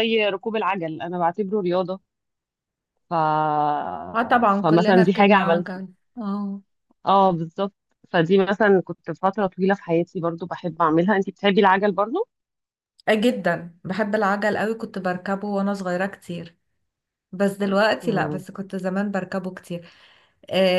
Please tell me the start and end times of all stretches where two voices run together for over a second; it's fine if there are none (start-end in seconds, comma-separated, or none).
4.6-5.8